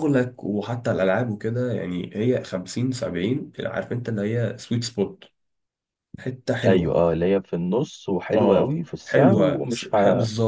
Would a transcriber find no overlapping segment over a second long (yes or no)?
no